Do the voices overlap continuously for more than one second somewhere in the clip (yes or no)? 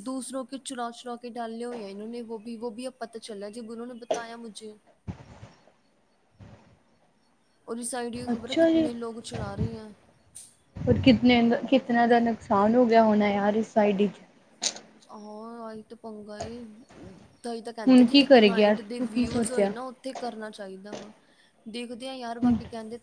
yes